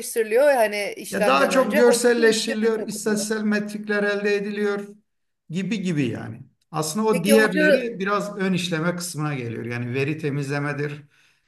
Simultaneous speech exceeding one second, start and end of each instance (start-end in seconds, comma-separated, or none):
1.1-3.3